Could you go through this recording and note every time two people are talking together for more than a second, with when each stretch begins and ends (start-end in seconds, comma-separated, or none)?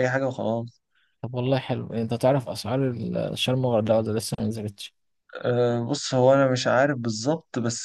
none